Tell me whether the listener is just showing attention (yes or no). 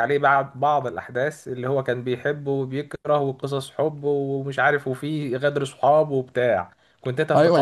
no